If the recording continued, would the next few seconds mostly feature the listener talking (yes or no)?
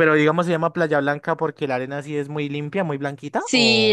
yes